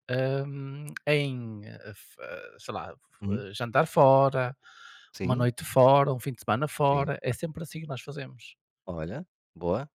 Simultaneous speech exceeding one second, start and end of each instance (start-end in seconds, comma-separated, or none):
none